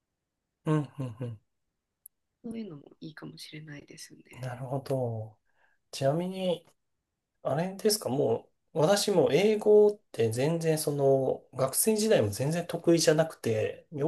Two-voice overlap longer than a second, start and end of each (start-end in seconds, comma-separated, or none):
none